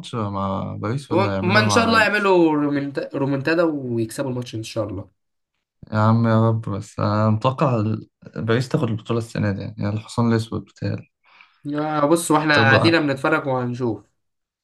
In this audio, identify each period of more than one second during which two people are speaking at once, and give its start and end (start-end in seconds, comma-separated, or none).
1.1-2.3